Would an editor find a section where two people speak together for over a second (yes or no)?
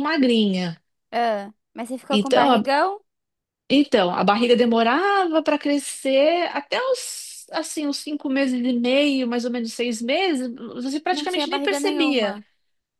yes